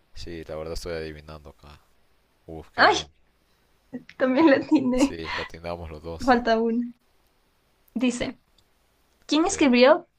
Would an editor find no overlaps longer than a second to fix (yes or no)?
yes